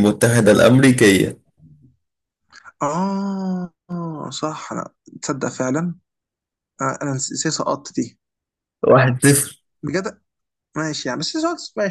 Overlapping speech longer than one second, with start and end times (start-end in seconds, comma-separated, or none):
none